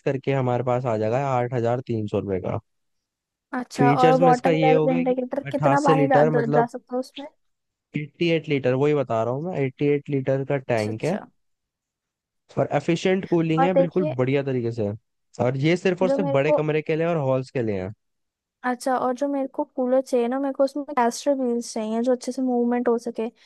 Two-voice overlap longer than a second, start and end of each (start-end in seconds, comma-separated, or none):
3.8-6.7